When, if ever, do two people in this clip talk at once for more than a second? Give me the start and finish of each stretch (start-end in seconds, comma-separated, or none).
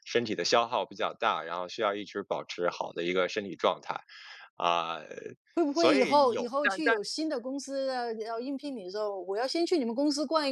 5.7-7.0